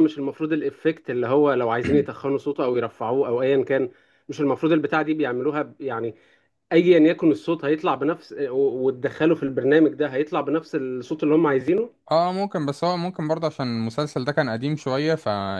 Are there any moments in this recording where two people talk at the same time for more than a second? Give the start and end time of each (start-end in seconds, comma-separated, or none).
none